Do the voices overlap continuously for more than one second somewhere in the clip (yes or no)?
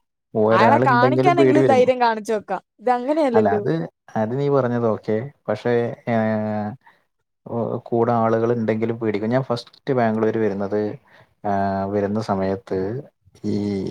yes